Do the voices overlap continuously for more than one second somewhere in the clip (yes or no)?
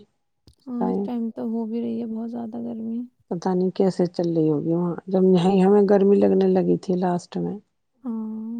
no